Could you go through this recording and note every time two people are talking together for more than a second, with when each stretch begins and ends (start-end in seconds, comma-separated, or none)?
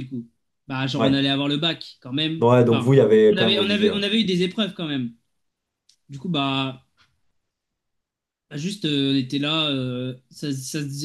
2.4-4.0